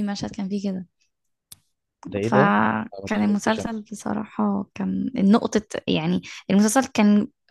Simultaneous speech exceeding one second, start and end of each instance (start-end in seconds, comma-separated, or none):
2.2-3.7